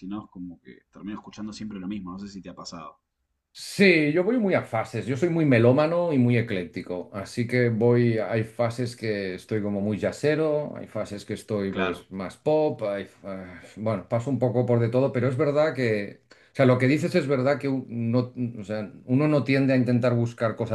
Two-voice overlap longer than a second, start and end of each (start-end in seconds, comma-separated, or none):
none